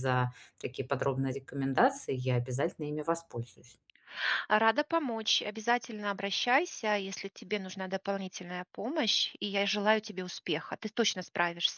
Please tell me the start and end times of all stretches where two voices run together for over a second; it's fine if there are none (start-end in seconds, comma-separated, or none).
none